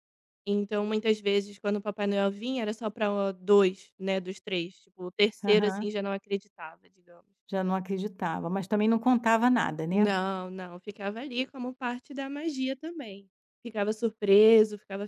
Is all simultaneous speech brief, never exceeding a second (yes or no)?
yes